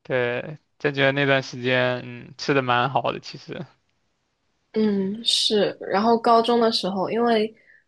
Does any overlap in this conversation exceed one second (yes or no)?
no